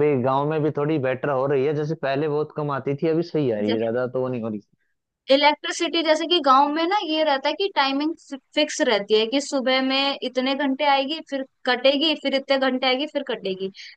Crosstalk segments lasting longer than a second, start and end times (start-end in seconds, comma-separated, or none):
none